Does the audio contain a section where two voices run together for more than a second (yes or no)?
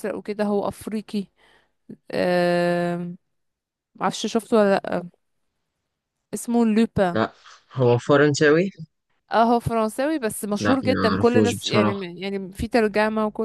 yes